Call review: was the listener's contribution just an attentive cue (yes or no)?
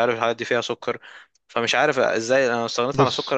yes